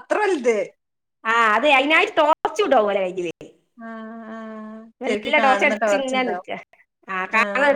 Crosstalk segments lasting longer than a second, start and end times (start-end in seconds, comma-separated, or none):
5.1-6.5